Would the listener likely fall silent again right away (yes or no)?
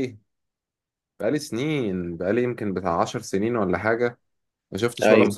yes